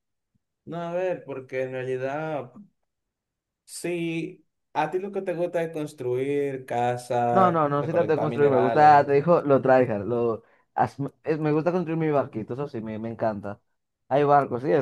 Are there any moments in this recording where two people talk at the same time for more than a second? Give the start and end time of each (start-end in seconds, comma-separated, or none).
7.3-9.1